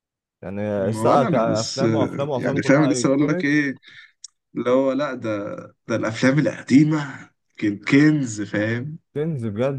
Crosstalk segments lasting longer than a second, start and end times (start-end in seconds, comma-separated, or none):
0.8-3.5